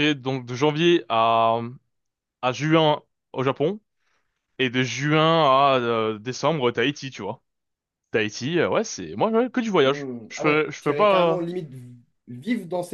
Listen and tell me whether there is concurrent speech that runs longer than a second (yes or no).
yes